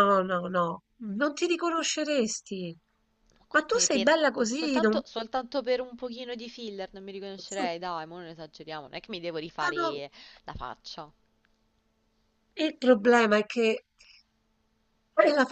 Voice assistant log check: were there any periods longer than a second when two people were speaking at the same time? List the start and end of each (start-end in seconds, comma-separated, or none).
3.5-5.0